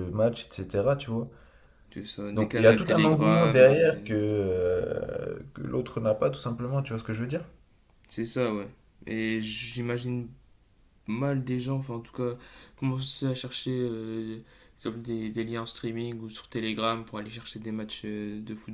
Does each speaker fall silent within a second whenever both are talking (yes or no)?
no